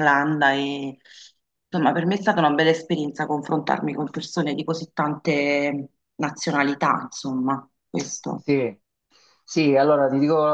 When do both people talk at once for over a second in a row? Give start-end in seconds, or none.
none